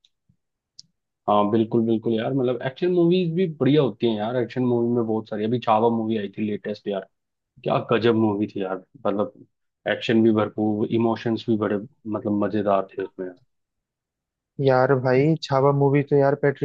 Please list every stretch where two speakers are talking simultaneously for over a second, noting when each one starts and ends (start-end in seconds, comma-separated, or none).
none